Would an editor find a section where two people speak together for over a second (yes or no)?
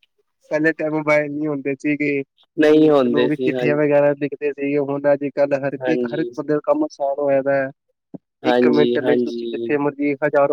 yes